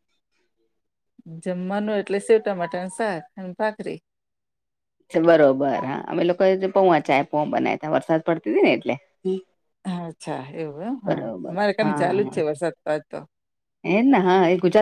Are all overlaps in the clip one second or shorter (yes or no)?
yes